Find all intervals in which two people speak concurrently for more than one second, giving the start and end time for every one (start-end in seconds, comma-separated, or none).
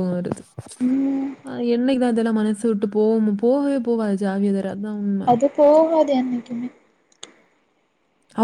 none